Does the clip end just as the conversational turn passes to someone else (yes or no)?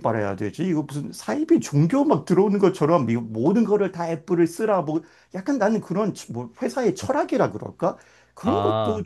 no